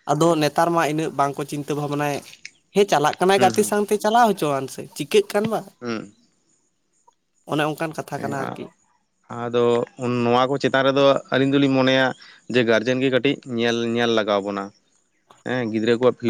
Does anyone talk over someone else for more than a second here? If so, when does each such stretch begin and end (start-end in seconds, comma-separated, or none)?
none